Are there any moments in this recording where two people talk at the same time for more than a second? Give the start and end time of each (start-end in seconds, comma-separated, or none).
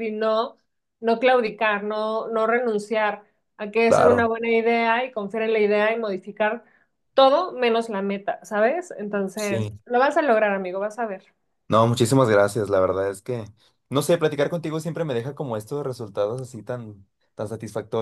none